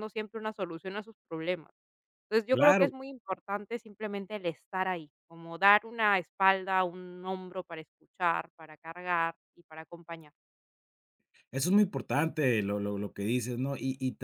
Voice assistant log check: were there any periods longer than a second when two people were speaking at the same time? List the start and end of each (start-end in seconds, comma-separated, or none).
none